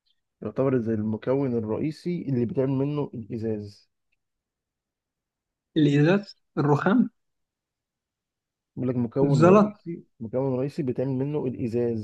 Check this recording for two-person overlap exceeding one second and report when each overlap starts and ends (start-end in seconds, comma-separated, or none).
none